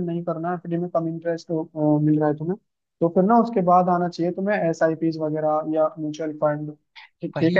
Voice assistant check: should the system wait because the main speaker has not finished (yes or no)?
no